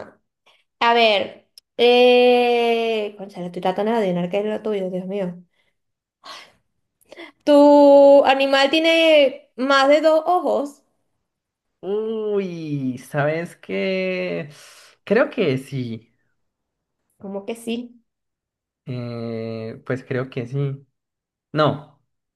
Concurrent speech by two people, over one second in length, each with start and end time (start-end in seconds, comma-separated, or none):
none